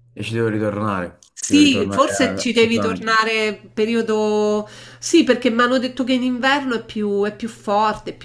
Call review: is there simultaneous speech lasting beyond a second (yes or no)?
yes